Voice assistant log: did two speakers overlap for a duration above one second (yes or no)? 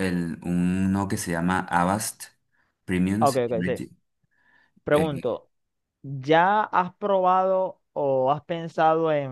no